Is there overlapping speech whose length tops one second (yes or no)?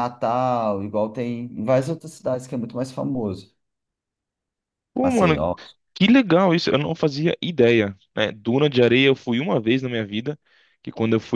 no